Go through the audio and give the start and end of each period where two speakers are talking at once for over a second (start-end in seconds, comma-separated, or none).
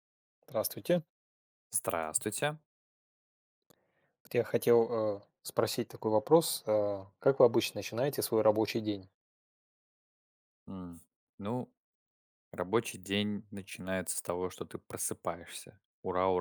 none